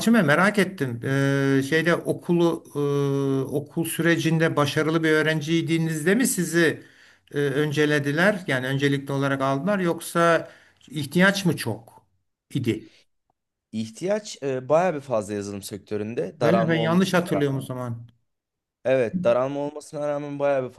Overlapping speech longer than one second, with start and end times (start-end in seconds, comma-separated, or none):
16.4-17.7